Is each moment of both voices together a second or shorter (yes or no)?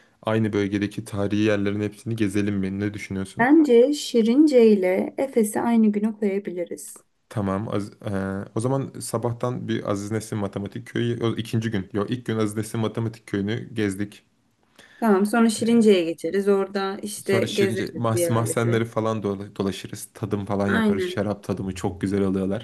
no